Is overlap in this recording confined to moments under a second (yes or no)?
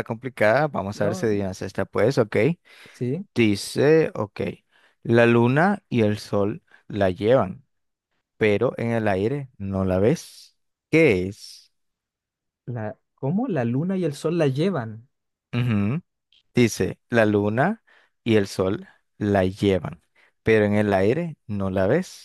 yes